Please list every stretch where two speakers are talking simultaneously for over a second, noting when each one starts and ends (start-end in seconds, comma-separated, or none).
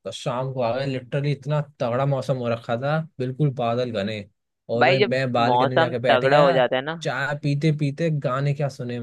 4.8-6.6